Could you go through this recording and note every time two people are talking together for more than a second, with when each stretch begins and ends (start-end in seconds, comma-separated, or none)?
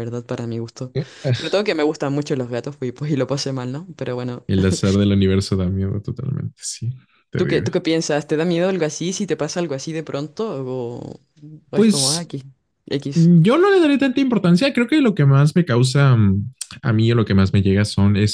none